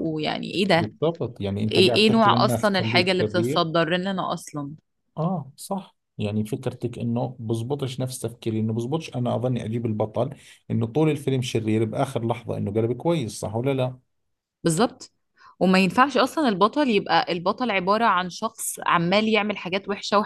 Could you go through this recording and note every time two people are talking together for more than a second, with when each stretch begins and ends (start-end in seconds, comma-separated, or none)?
1.7-3.7